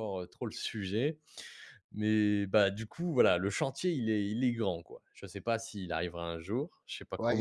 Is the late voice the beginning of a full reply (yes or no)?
yes